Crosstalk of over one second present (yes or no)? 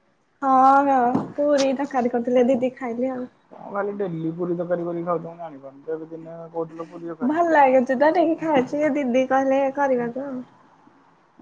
no